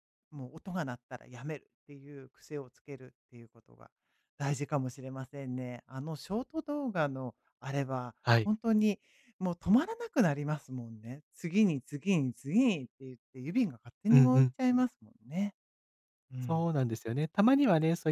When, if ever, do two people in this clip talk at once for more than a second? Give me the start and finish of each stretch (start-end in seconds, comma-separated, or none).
none